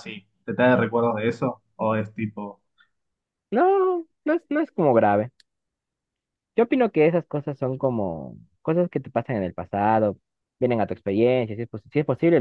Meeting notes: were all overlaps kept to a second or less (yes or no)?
yes